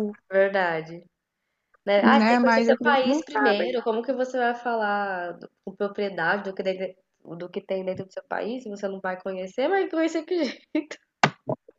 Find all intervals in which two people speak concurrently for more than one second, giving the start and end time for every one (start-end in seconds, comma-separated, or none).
2.0-3.8